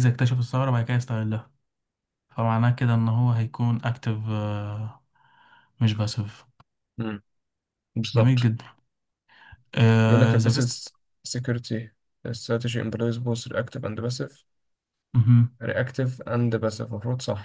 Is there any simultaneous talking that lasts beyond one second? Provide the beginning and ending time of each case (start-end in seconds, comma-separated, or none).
none